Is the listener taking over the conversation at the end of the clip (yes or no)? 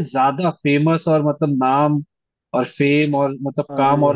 no